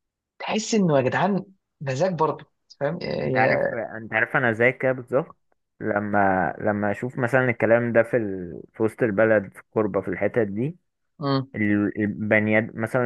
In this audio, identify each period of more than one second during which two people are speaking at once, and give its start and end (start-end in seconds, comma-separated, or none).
none